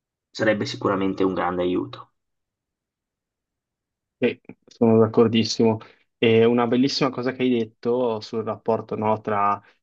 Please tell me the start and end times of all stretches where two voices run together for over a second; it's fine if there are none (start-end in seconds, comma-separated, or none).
none